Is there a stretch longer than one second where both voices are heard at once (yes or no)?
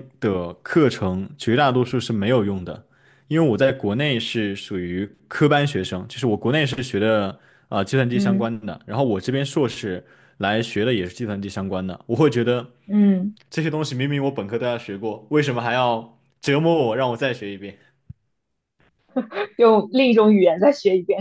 no